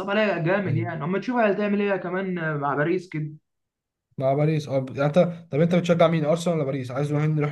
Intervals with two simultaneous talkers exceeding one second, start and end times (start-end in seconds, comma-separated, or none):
none